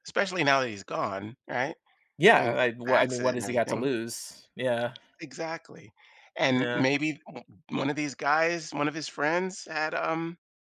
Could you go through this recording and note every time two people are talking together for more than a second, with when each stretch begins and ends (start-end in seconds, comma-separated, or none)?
2.3-3.9